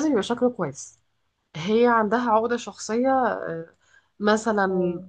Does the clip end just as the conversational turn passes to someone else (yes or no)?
no